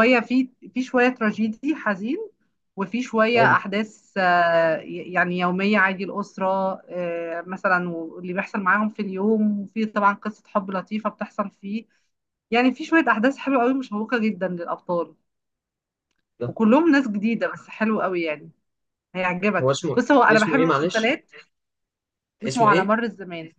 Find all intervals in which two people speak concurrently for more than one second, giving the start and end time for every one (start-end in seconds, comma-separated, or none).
19.6-21.1